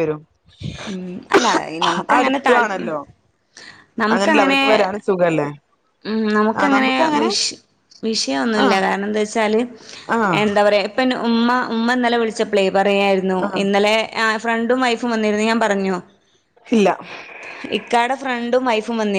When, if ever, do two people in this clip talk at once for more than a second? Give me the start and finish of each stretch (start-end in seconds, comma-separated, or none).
none